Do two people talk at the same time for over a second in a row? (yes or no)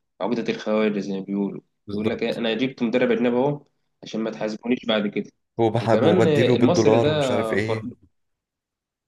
yes